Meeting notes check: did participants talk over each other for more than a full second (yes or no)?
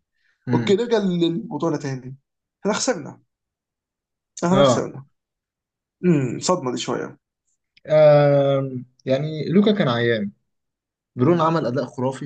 no